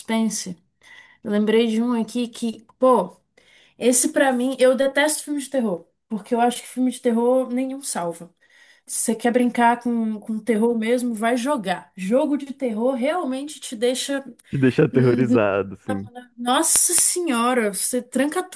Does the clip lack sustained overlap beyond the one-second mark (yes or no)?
yes